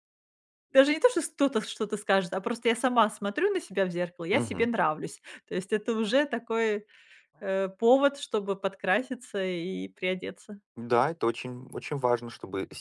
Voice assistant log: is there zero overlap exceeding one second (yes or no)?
yes